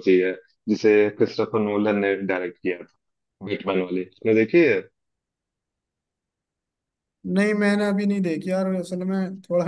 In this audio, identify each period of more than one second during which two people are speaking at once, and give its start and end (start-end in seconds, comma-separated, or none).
none